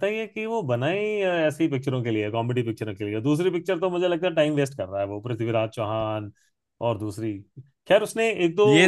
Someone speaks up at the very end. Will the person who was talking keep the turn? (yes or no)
yes